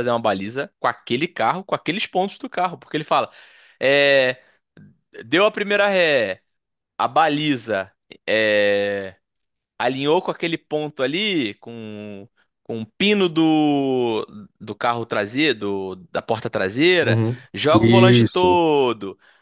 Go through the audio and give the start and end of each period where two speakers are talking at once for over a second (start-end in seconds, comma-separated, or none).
17.0-18.6